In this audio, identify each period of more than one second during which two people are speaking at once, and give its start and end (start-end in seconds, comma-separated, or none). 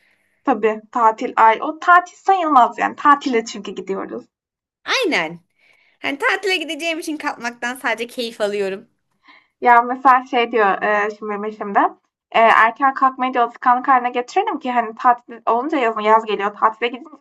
none